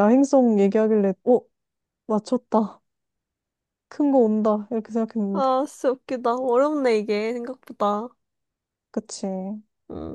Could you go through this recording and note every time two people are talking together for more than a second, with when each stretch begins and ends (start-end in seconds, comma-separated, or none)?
none